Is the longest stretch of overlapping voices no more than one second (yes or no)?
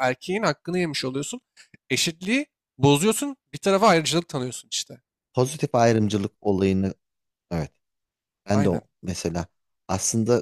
yes